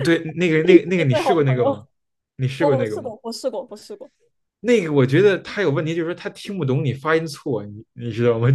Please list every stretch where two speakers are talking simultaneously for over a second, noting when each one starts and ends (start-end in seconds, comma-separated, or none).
0.5-1.9